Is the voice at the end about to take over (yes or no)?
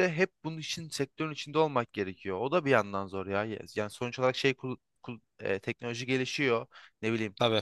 no